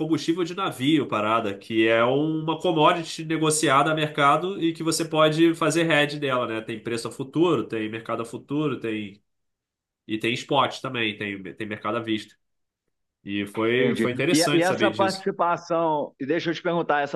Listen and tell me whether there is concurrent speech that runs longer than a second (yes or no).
yes